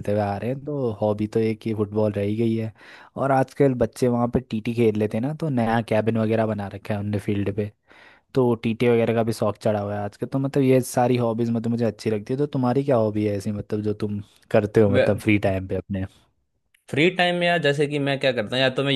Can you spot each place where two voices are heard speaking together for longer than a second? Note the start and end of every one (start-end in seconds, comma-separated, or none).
none